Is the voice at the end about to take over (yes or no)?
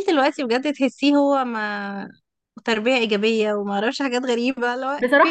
yes